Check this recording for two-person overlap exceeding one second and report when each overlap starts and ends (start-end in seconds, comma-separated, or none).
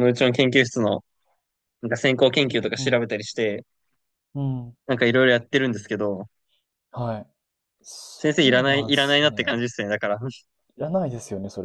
8.2-9.7